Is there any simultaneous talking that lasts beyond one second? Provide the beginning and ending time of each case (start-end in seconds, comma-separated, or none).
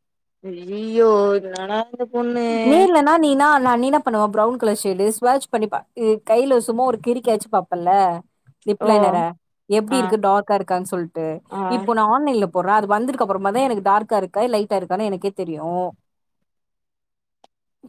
none